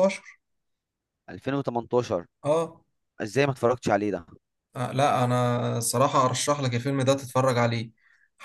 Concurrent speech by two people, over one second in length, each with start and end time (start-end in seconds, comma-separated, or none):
none